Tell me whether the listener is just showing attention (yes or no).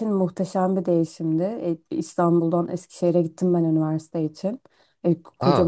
yes